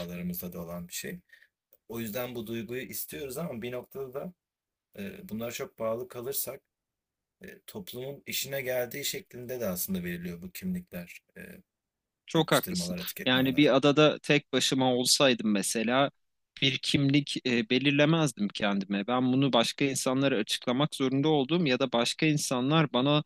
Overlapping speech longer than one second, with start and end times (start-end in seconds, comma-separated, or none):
12.3-13.7